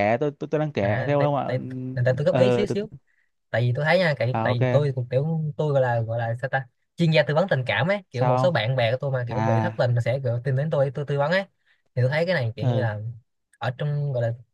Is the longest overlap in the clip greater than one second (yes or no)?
yes